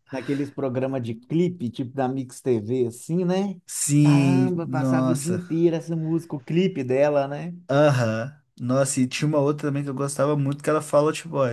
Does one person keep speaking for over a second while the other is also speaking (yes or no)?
yes